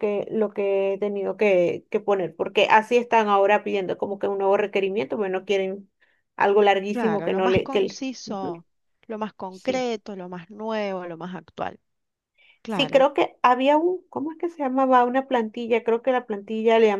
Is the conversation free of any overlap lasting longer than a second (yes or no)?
no